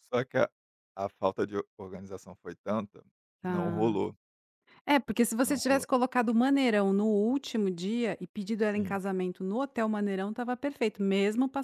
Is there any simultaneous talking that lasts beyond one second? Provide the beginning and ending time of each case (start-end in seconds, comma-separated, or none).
none